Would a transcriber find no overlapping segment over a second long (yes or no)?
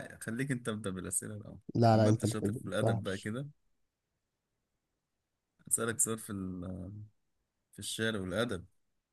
no